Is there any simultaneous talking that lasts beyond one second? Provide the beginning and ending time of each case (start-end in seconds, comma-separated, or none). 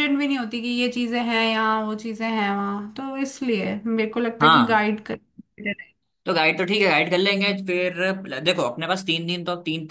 none